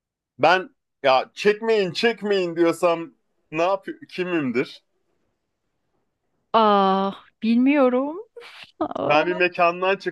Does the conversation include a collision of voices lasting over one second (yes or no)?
no